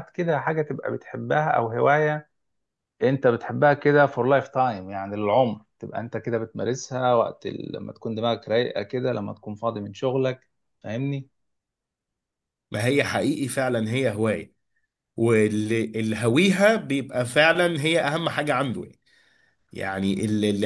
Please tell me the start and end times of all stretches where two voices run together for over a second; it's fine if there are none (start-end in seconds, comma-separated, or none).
none